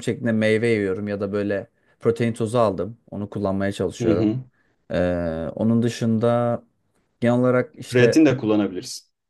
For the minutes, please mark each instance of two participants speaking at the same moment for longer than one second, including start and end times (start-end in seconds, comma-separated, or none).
none